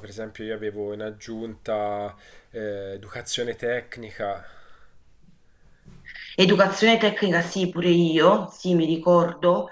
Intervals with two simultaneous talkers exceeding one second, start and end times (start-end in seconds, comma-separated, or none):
none